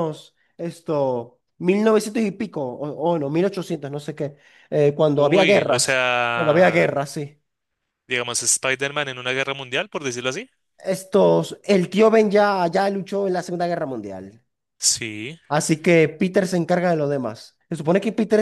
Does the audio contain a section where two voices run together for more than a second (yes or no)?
yes